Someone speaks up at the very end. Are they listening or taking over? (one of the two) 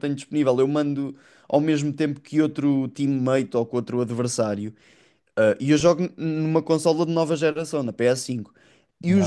listening